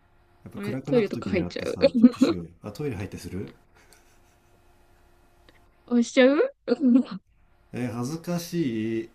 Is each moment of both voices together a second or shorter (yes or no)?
no